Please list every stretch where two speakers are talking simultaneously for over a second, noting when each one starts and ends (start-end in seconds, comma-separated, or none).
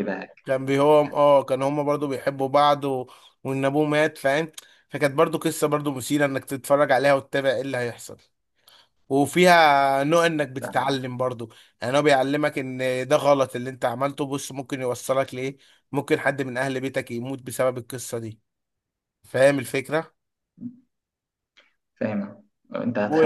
none